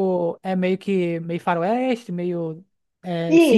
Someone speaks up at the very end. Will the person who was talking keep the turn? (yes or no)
no